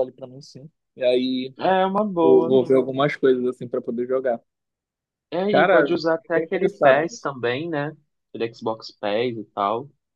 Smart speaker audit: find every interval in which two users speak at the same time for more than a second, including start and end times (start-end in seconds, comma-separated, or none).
5.5-7.3